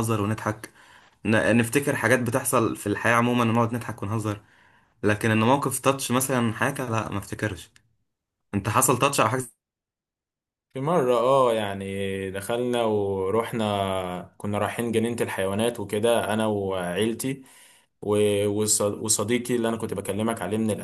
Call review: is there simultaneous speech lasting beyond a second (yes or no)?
no